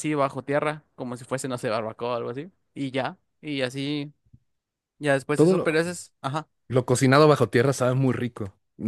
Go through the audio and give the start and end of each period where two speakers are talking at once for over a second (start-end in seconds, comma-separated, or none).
none